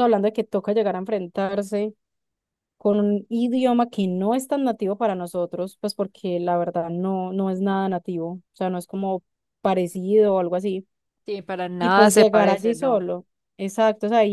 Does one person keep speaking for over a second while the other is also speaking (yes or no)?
yes